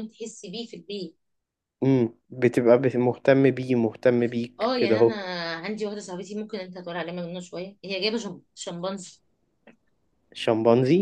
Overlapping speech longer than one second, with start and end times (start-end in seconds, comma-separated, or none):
none